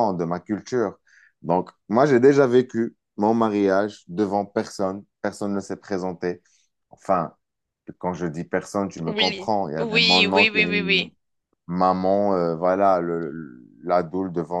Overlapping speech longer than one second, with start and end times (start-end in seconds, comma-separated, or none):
9.1-10.7